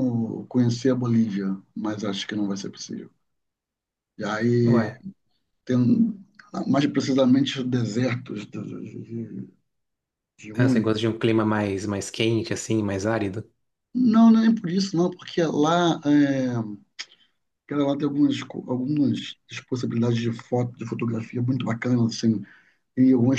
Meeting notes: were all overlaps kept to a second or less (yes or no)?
yes